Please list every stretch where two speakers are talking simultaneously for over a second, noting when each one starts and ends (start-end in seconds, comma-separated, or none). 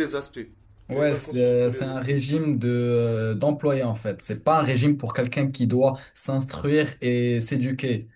0.9-2.2